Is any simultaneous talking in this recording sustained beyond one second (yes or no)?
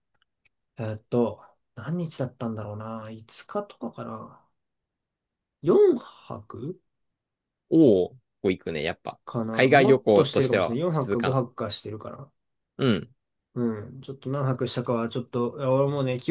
yes